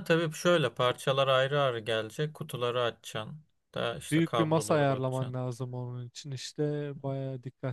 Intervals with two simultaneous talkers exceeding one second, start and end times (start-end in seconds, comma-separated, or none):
4.1-5.4